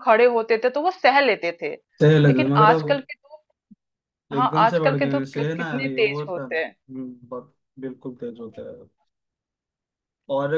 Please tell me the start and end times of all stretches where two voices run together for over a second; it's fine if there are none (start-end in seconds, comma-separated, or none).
4.4-6.8